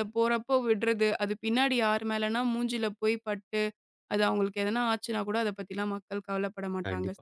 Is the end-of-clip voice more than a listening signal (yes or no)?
yes